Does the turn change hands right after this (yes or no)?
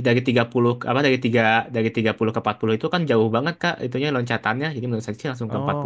yes